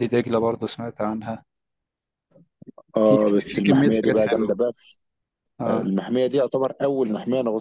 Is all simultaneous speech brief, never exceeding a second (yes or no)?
no